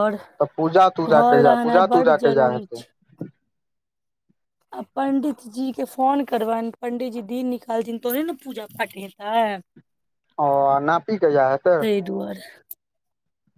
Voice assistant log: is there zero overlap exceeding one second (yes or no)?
no